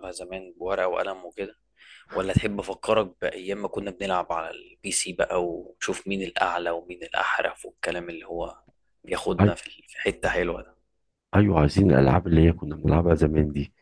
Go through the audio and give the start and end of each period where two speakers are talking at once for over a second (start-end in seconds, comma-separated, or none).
none